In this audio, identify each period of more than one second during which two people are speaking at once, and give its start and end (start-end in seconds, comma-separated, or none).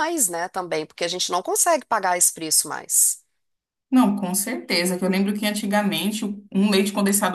none